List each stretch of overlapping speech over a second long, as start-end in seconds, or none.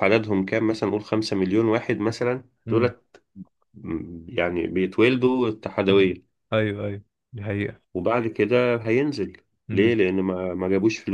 none